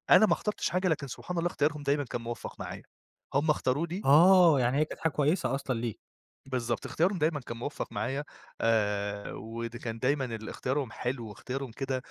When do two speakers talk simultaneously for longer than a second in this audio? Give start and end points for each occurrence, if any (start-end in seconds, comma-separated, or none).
none